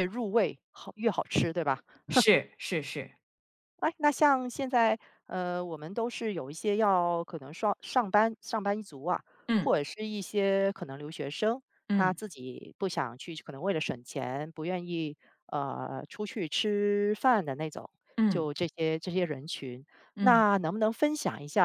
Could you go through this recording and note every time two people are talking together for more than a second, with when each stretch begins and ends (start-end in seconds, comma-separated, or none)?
none